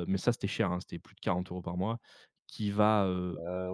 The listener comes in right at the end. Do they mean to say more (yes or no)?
no